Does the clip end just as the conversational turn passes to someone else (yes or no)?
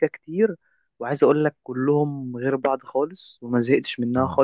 no